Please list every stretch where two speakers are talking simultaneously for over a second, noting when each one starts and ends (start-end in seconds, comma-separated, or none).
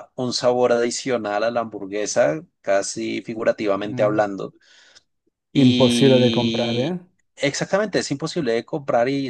5.5-7.0